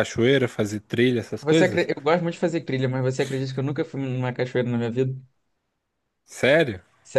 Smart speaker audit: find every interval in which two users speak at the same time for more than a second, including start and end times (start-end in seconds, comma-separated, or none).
none